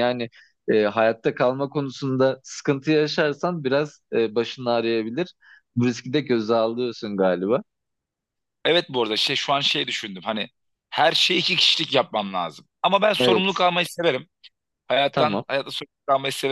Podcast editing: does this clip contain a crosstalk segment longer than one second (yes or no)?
no